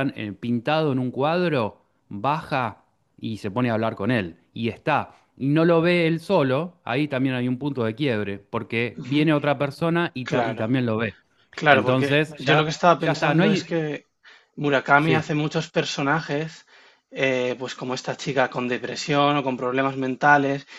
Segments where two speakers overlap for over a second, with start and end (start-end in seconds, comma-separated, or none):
11.7-13.7